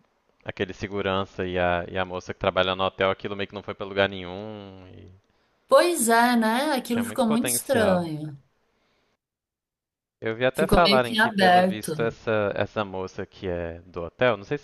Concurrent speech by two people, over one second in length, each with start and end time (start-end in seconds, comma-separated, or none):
6.8-8.1, 10.5-11.9